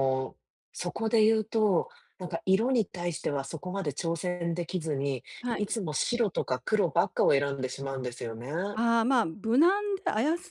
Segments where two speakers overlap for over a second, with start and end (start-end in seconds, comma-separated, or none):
none